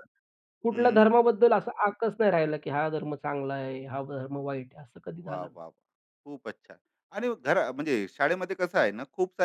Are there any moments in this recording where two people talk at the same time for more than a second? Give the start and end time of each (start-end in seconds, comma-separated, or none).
none